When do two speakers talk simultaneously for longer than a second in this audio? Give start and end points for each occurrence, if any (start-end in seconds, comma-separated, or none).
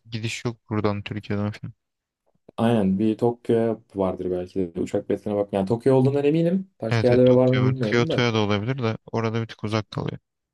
6.9-8.2